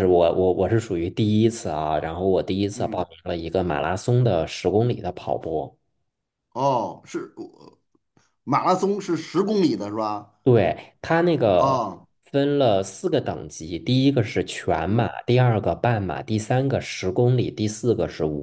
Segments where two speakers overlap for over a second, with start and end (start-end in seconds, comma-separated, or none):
none